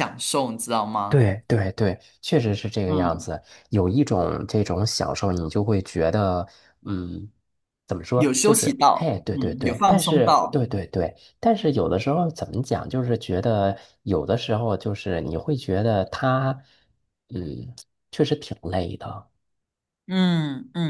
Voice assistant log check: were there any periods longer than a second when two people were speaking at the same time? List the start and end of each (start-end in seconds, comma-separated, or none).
8.2-10.6